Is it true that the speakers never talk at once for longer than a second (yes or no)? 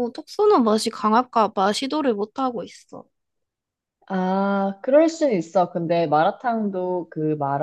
yes